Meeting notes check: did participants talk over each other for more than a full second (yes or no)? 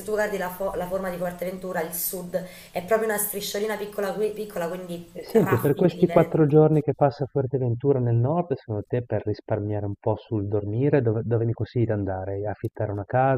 yes